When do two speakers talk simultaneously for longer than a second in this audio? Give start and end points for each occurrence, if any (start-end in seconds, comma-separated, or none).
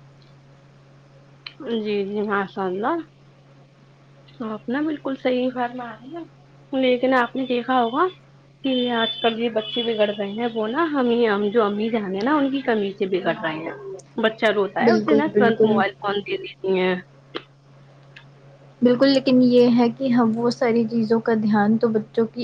none